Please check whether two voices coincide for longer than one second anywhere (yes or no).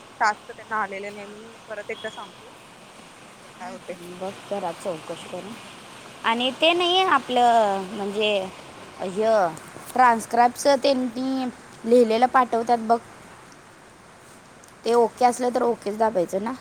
no